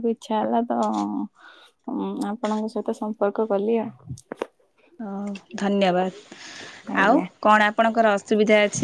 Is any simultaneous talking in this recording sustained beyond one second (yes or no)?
no